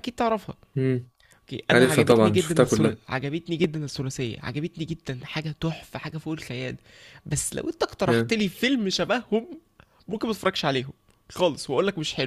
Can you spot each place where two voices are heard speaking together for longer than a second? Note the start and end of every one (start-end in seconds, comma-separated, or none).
1.7-3.0